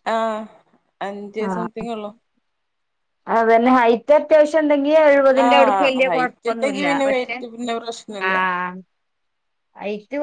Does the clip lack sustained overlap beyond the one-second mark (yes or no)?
no